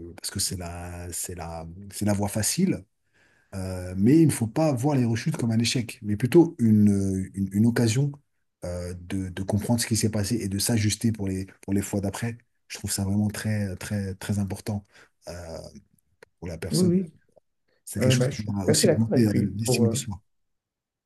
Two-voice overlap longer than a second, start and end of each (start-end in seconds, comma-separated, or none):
18.0-20.0